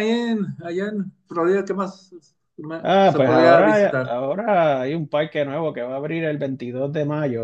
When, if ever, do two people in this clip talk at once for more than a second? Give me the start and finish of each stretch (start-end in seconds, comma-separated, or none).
2.8-4.1